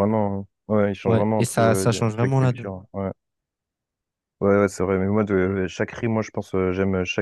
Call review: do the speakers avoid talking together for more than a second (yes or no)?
no